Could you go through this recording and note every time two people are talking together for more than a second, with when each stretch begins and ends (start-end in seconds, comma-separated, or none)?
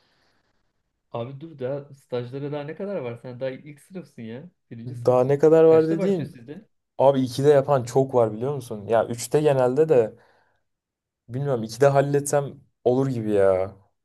4.9-6.4